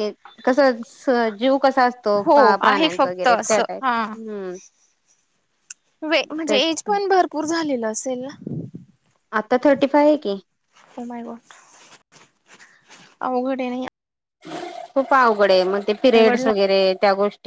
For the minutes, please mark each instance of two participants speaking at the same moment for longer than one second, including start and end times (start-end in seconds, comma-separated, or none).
2.2-4.1